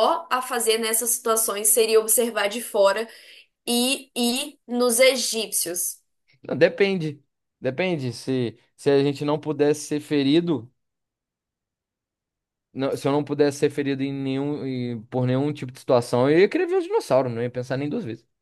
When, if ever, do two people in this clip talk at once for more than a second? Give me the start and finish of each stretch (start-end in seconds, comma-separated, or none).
none